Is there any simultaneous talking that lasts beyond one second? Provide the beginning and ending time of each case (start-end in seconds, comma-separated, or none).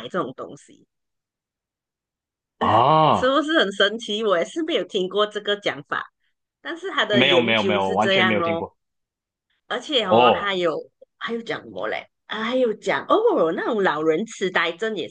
7.1-8.6